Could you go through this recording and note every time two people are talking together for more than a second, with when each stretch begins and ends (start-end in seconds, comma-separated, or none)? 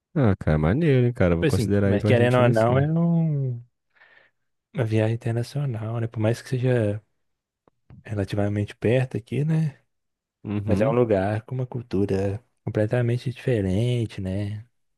1.3-2.9